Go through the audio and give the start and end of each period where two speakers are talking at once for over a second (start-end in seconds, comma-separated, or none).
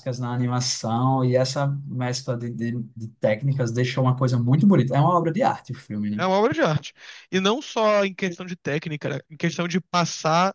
none